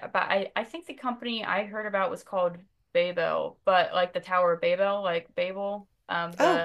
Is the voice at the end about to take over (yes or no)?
yes